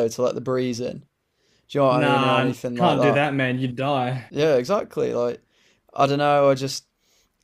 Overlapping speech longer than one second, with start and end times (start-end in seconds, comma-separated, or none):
1.9-3.2